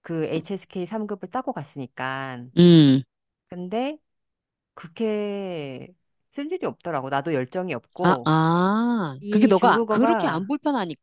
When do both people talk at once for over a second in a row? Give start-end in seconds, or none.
9.2-10.5